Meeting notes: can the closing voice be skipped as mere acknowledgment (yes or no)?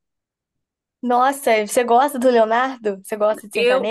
no